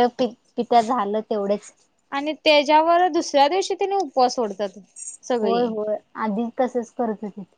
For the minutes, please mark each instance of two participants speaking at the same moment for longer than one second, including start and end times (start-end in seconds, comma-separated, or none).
none